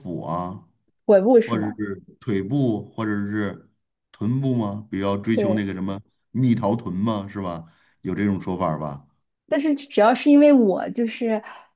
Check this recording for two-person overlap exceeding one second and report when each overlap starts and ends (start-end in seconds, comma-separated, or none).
none